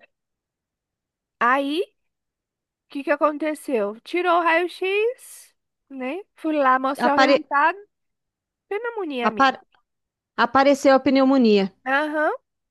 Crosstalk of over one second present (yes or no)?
no